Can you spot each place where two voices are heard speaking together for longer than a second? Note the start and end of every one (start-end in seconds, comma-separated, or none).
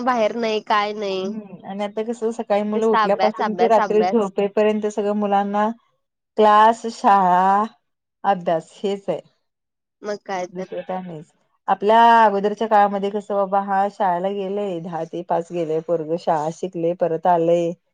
2.7-4.3